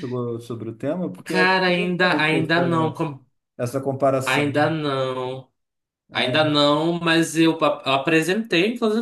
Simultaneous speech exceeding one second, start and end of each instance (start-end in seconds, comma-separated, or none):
1.2-3.0